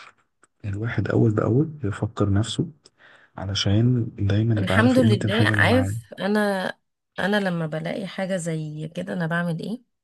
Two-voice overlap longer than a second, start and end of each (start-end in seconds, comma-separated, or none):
4.6-6.0